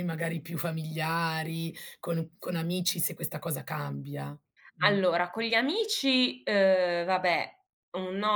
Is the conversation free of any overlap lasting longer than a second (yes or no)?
yes